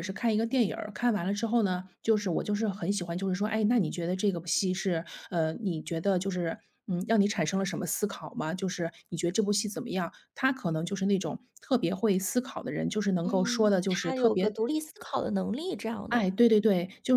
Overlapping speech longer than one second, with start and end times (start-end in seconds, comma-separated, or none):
13.2-14.5